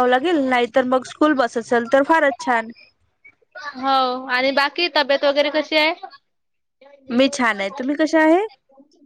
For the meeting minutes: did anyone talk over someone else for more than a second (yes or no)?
no